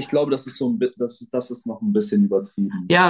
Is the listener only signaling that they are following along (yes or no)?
no